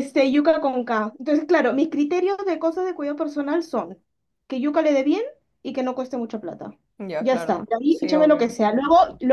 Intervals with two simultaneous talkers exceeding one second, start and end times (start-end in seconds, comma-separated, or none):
7.2-8.6